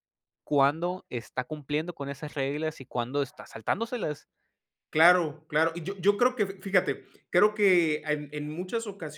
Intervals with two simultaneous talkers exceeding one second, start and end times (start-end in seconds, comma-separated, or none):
none